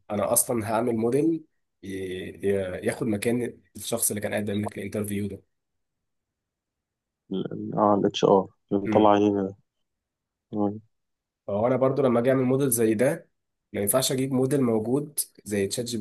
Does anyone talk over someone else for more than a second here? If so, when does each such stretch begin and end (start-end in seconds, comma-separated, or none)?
none